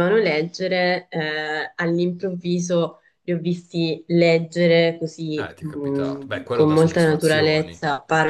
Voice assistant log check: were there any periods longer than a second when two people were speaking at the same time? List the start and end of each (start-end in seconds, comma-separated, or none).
5.3-7.7